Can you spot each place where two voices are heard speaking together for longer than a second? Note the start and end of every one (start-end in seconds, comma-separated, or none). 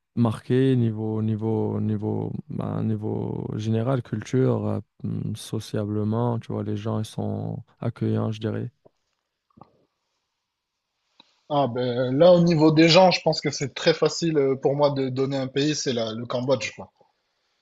none